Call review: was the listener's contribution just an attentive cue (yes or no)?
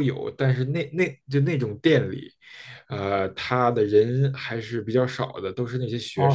no